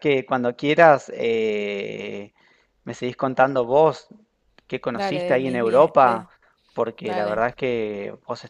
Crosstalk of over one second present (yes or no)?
yes